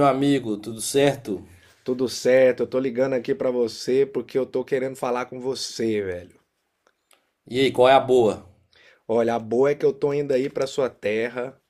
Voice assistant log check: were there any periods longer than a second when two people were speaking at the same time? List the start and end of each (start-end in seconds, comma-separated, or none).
none